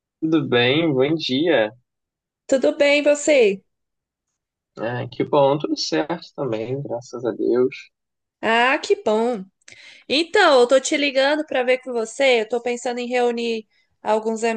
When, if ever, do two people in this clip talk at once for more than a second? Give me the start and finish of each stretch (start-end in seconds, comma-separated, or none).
none